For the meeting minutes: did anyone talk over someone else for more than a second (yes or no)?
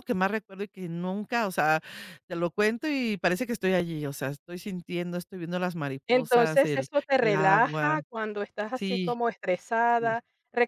yes